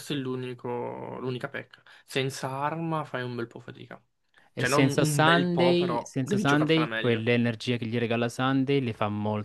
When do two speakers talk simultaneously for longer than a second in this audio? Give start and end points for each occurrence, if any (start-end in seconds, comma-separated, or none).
4.5-7.3